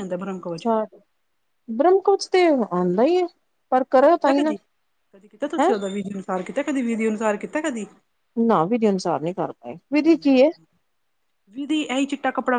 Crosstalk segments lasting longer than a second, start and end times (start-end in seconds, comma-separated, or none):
none